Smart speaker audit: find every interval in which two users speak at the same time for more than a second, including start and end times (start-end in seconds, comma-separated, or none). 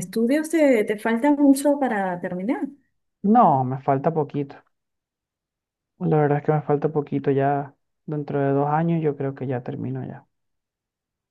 none